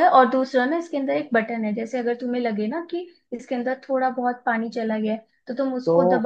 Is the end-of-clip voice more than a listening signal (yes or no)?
no